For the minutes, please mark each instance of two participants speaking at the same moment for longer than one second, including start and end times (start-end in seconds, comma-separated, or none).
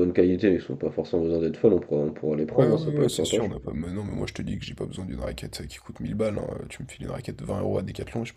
2.5-3.7